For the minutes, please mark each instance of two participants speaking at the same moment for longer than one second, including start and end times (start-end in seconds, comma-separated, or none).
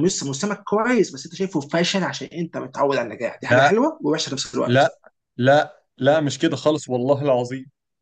none